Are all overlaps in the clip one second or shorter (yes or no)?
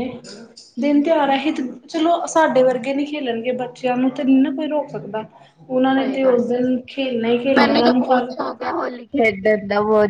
yes